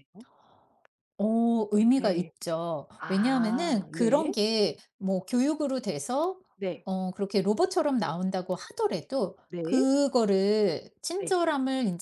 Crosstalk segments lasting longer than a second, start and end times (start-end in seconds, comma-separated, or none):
3.0-4.3